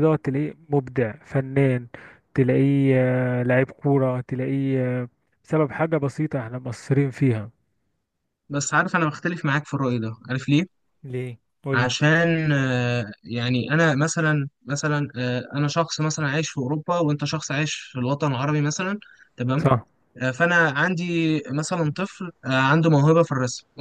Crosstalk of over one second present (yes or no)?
no